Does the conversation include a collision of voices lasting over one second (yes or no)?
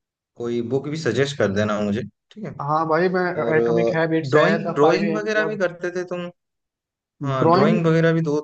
yes